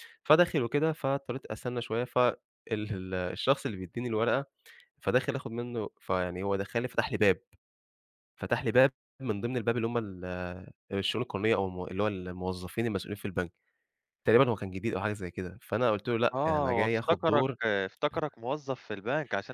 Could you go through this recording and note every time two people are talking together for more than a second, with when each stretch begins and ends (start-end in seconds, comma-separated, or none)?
16.3-17.6